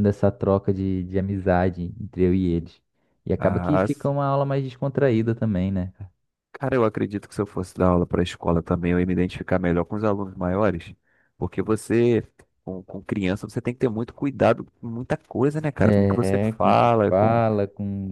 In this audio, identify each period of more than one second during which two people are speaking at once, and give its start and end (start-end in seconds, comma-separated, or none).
15.8-17.4